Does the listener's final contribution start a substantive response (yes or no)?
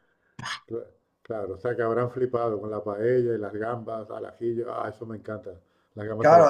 yes